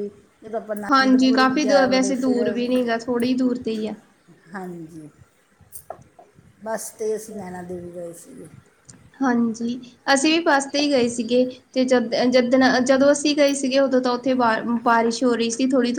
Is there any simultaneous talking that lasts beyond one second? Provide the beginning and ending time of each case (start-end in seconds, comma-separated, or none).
0.9-2.4